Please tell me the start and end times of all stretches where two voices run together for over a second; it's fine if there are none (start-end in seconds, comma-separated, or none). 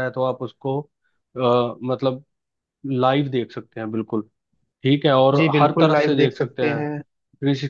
5.3-7.0